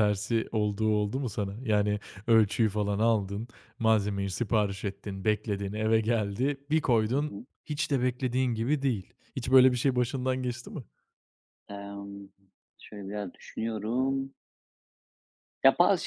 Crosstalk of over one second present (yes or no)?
no